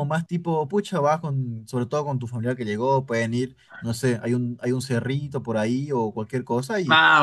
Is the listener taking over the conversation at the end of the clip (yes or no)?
no